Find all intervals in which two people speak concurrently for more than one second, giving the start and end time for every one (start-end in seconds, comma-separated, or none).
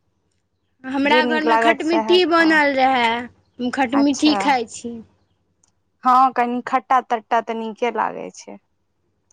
1.1-2.6